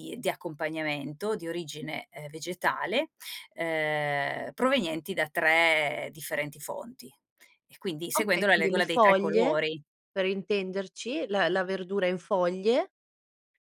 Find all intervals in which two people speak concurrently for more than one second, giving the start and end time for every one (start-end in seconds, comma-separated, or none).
8.1-9.6